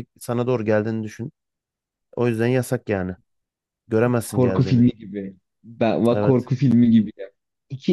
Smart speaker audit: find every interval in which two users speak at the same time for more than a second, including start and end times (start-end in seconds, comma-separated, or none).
none